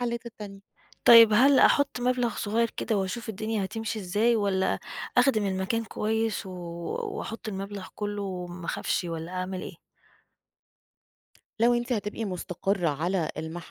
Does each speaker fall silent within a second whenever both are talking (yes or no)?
yes